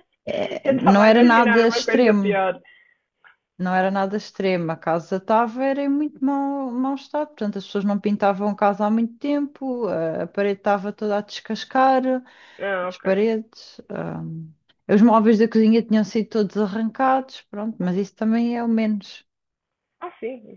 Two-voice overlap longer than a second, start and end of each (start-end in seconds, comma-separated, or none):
0.6-2.4